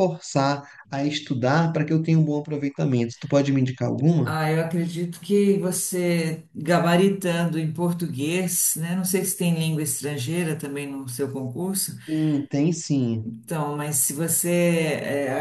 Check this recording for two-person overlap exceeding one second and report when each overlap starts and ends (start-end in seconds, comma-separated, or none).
none